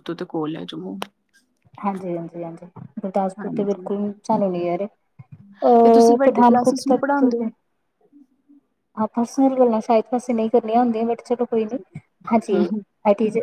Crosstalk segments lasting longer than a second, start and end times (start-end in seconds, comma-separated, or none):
5.8-7.4